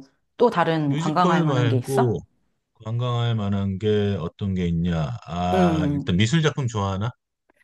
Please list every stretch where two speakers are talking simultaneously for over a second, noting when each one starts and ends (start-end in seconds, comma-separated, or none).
0.8-2.2